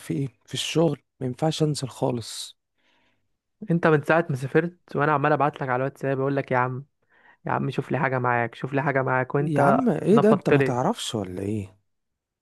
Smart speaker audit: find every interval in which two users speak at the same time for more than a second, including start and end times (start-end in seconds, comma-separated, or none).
9.4-10.8